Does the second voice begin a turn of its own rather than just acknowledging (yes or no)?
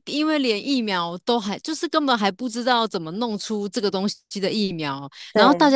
no